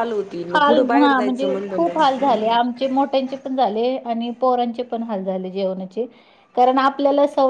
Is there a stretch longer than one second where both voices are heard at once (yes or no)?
yes